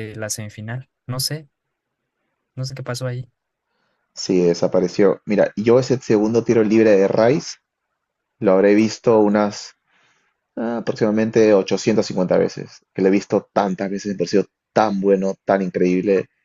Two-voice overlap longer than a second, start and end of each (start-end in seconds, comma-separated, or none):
none